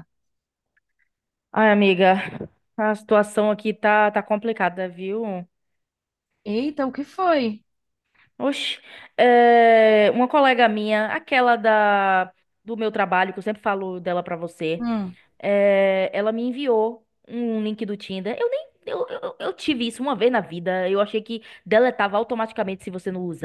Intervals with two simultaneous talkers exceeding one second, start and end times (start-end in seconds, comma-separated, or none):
none